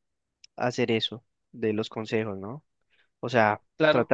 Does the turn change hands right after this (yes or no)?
no